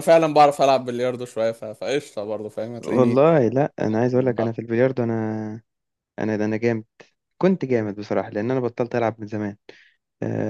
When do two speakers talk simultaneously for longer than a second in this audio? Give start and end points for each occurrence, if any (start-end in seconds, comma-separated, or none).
none